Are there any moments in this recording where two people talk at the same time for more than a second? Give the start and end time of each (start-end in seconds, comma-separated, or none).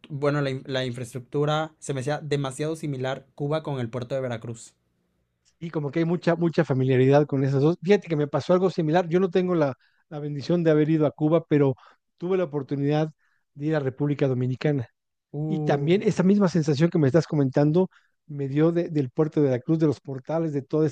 none